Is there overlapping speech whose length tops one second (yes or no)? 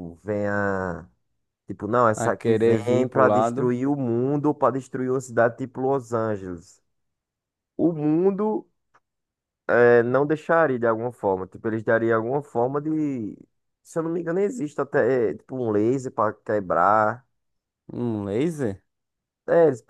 yes